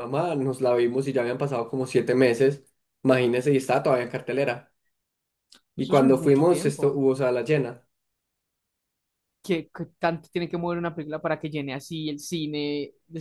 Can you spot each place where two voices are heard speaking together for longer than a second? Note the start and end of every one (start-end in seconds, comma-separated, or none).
5.8-7.0